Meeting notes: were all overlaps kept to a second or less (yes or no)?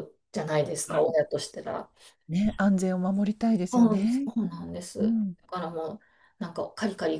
yes